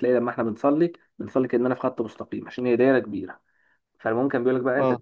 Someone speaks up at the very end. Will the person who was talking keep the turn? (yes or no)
yes